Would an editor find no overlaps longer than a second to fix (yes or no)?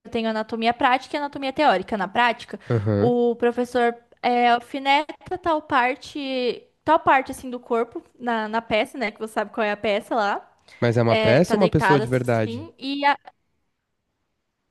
no